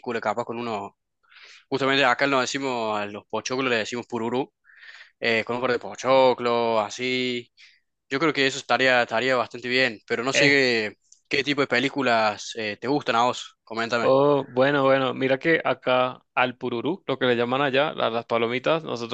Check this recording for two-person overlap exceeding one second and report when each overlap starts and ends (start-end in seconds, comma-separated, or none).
none